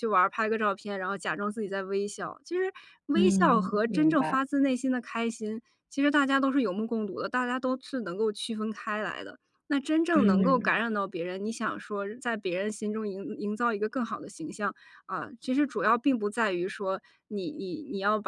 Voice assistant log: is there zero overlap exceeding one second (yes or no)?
no